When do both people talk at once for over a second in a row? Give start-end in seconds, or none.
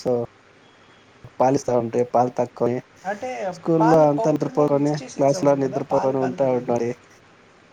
3.8-6.8